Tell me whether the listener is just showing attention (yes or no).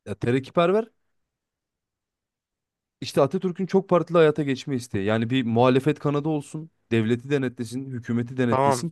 no